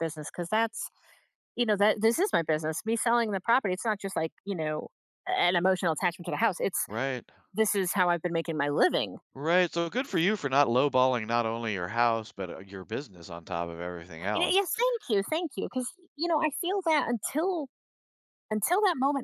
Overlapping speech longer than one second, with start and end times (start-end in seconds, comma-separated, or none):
none